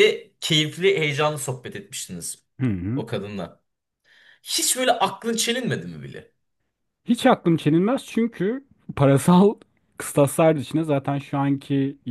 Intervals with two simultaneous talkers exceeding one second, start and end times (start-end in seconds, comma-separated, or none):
none